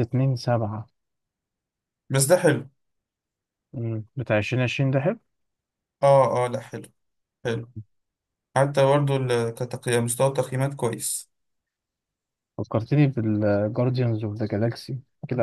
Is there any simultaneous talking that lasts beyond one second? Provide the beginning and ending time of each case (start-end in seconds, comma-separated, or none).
none